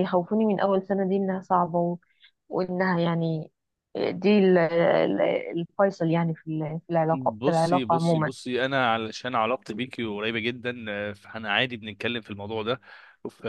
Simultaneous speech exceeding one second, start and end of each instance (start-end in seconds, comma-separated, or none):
7.1-8.3